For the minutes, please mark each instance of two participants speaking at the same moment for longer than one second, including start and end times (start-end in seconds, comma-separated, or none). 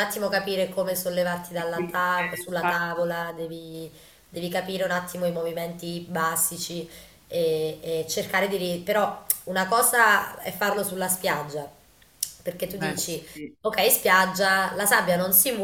1.6-3.1